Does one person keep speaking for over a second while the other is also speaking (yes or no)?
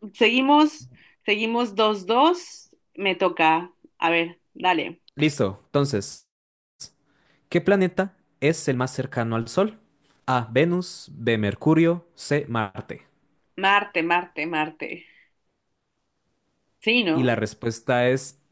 no